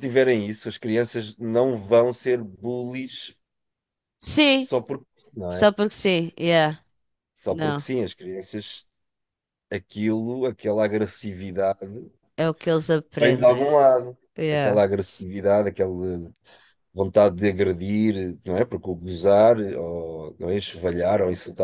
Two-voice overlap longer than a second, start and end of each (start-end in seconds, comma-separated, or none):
none